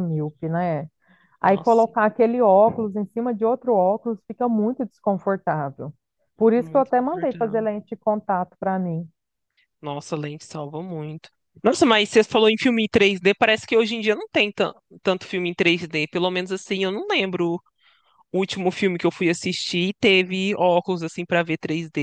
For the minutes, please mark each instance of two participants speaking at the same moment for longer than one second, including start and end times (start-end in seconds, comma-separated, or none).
6.4-7.7